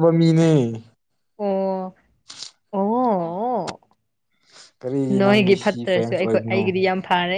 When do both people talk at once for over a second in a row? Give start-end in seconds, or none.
5.2-6.7